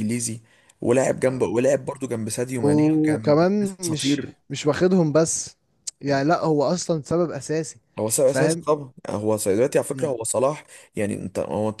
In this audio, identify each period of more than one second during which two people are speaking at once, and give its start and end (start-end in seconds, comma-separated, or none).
2.6-4.3